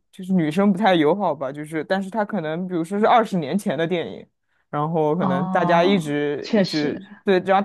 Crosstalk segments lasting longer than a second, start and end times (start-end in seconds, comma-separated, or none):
5.2-7.0